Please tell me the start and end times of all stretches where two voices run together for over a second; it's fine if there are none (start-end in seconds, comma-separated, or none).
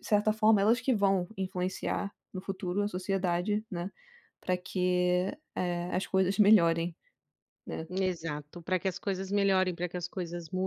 none